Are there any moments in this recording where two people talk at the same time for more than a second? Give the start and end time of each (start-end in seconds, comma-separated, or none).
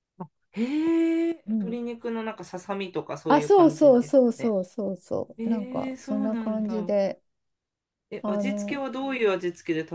3.3-4.5, 5.4-6.9